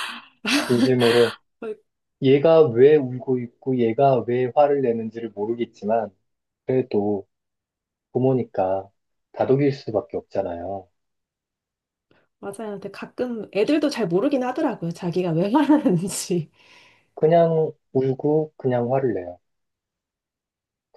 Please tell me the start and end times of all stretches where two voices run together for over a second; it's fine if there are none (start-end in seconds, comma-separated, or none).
none